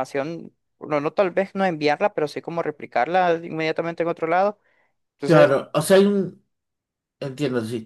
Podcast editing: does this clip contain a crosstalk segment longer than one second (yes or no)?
no